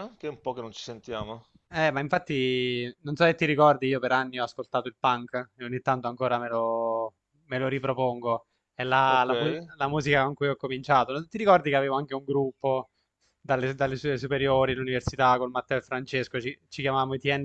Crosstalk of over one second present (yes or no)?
no